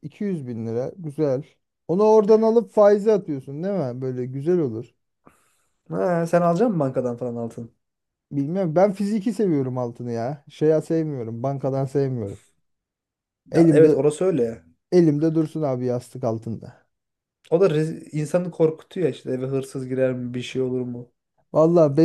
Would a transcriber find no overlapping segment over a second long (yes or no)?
yes